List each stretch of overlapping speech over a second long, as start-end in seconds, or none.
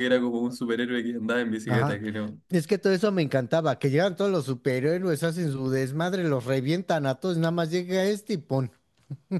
none